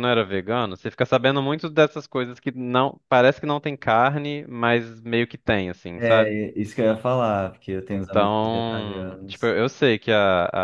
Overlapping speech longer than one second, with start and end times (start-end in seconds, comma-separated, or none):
7.9-9.5